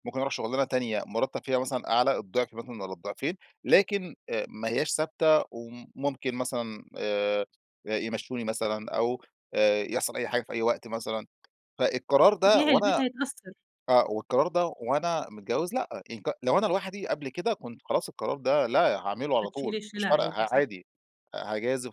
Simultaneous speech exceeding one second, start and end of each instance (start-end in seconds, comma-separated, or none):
19.4-20.7